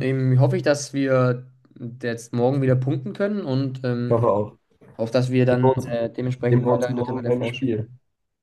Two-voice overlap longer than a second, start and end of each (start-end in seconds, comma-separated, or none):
6.5-7.8